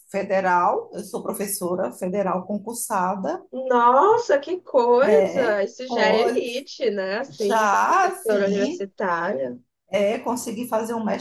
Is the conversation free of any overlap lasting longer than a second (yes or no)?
no